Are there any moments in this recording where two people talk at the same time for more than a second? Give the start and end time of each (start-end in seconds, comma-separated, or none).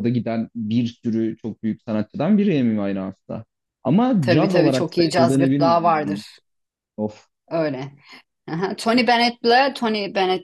4.2-6.2